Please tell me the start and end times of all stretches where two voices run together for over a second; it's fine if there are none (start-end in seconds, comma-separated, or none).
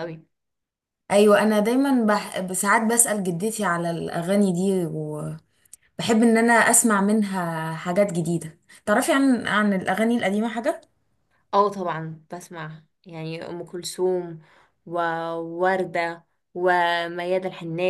none